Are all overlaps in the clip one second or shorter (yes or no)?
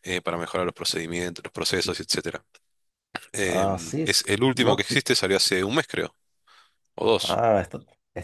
no